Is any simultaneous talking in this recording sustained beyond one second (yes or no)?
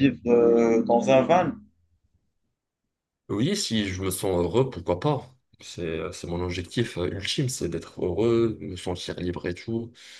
no